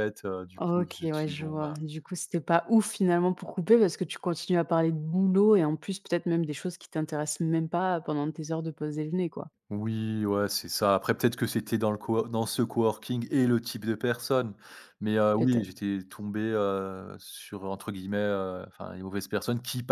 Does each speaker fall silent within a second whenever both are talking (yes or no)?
no